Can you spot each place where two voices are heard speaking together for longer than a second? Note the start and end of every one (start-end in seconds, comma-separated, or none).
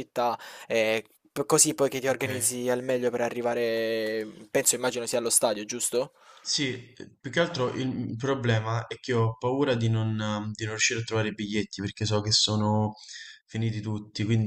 none